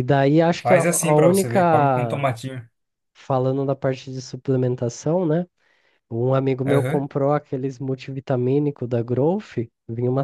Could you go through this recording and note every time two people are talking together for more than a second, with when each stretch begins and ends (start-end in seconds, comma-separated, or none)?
0.6-2.3